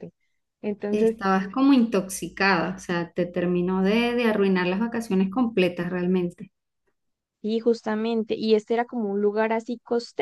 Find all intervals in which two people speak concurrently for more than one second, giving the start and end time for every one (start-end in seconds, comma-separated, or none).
none